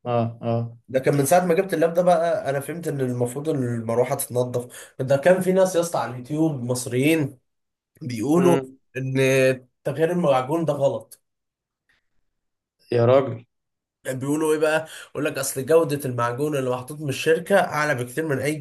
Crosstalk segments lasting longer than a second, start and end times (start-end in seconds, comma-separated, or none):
none